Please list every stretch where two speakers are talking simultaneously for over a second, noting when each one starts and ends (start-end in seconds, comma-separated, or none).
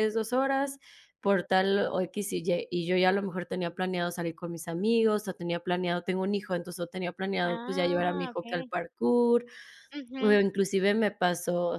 7.4-8.7